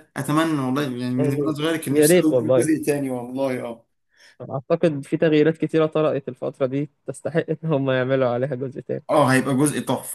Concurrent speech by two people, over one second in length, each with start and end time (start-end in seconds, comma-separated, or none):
1.2-2.7